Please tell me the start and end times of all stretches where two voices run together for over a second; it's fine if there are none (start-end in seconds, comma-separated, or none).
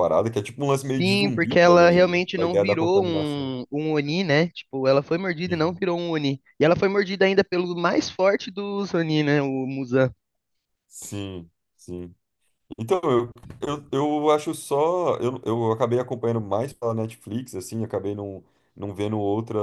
0.9-3.6